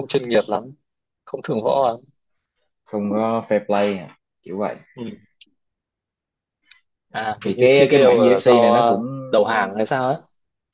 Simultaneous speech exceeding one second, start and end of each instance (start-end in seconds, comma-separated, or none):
7.5-9.0